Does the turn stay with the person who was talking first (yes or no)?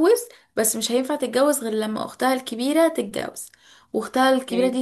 yes